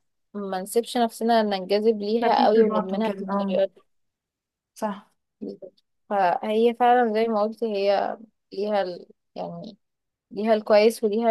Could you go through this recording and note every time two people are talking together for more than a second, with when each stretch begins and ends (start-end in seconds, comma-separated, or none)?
2.2-3.6